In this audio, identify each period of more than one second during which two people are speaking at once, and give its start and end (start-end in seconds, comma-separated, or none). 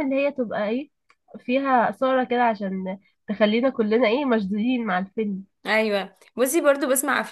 none